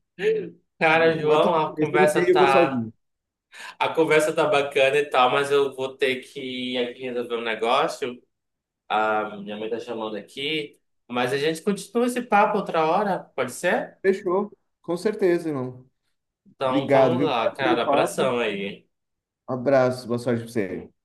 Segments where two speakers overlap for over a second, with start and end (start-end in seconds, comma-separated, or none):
0.9-2.9, 16.6-18.3